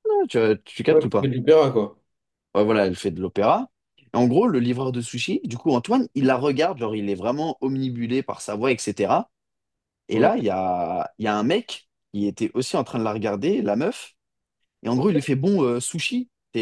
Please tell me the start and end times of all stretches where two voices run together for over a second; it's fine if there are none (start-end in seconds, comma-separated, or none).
none